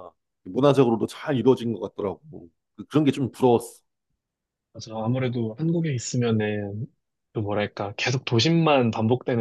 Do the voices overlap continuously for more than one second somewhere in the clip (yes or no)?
no